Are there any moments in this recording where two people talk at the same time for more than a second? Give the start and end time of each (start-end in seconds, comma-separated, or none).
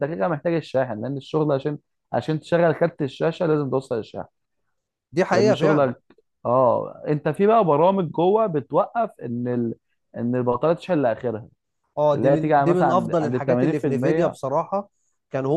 12.1-14.4